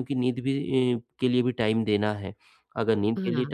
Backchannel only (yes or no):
yes